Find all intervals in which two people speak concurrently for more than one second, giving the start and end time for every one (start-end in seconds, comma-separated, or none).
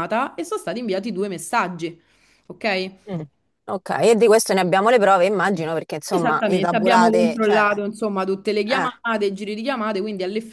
6.1-7.7